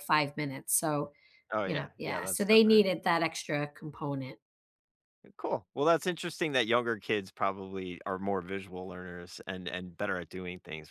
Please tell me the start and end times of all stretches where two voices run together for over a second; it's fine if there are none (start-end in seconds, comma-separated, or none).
1.6-2.9